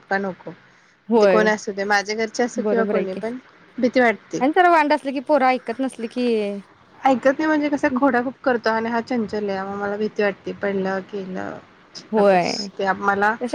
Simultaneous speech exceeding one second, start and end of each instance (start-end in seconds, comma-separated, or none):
none